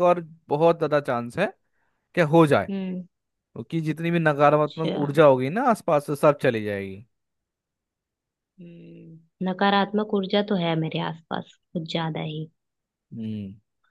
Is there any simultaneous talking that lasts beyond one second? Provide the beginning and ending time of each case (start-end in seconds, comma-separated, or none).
none